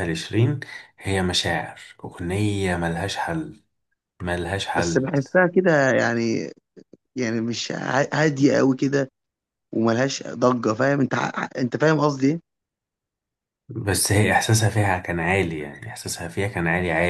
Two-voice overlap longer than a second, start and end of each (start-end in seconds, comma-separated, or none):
none